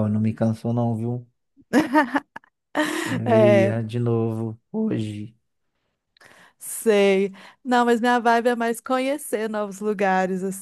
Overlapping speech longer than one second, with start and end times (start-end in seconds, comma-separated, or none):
none